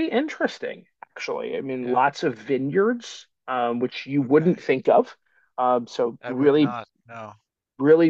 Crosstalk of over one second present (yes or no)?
no